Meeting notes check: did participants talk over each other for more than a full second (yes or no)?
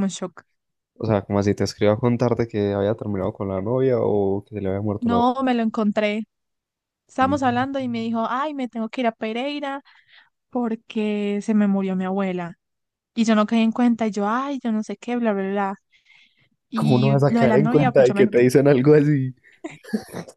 yes